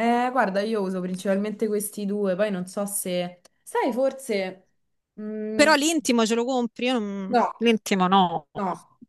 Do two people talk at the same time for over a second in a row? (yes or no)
no